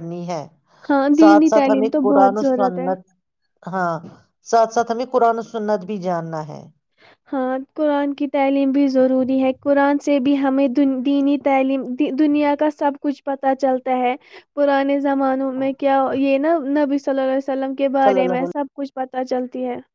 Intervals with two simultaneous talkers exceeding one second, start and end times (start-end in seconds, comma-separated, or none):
1.2-2.9